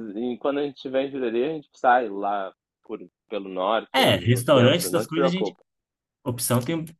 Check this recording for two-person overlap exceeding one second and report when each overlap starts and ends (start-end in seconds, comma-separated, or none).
3.9-5.6